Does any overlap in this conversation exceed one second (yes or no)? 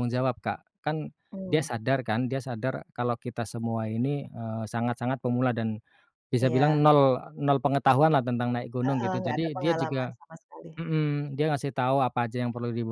yes